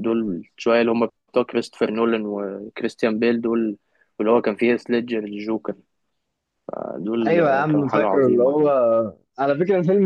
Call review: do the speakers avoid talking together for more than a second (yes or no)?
no